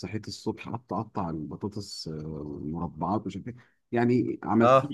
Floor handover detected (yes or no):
no